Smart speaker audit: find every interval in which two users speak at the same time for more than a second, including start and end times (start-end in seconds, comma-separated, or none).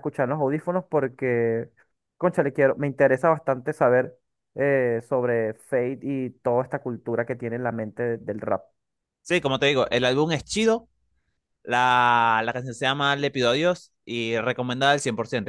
none